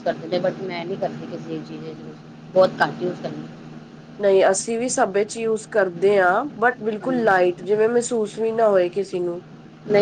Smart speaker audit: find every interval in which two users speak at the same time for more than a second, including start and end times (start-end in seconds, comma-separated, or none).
none